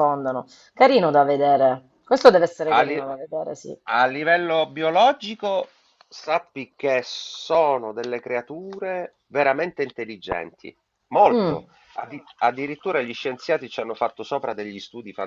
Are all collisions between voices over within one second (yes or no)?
yes